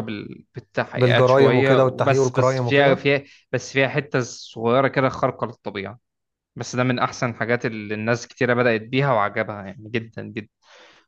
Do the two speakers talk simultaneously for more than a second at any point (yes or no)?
yes